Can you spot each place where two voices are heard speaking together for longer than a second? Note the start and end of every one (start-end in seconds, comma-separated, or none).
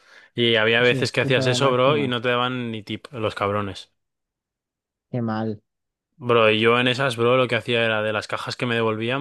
0.8-2.1